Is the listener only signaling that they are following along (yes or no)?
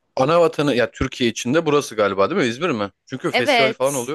no